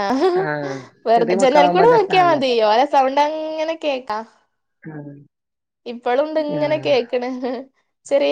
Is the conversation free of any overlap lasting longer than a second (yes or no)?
no